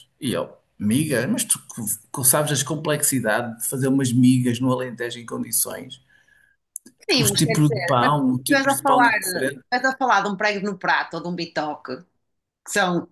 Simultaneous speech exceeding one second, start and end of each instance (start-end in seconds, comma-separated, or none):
7.2-9.6